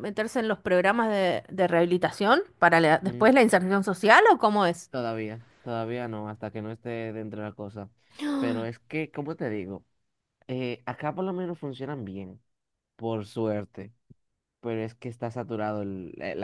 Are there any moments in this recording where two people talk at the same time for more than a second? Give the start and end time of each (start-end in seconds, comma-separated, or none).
none